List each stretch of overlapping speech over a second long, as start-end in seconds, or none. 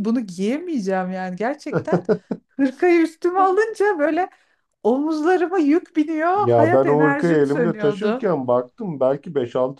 6.3-8.2